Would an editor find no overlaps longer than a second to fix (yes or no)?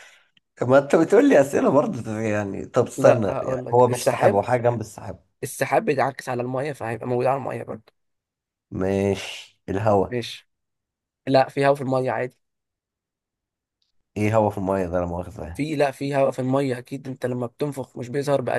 no